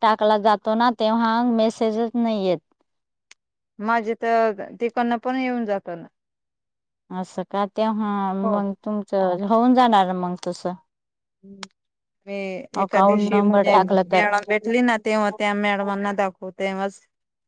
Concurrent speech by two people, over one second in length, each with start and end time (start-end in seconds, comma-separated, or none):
12.8-14.2